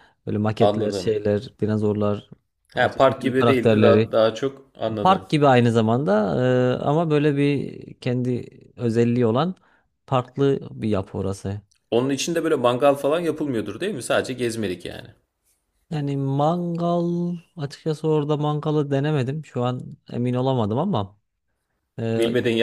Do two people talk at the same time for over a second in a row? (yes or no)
yes